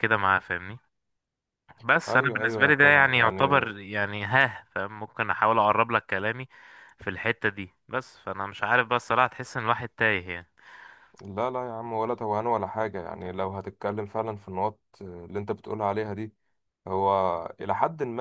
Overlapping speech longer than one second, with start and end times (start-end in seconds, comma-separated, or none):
2.1-3.7